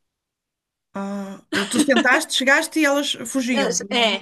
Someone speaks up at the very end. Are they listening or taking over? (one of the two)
taking over